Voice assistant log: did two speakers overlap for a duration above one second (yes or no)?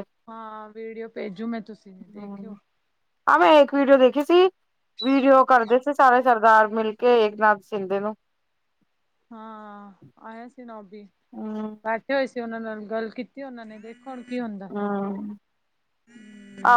no